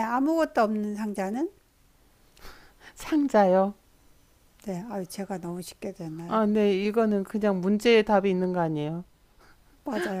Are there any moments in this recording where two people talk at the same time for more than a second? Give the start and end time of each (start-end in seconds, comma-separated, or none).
none